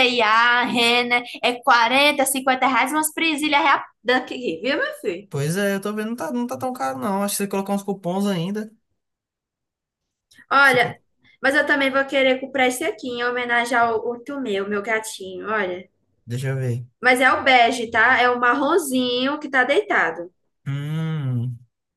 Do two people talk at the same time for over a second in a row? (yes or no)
no